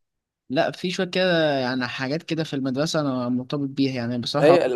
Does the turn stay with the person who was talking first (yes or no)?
no